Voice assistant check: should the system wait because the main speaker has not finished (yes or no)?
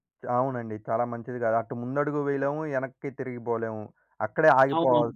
yes